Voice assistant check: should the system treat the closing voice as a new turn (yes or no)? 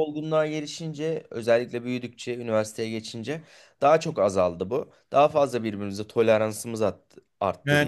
yes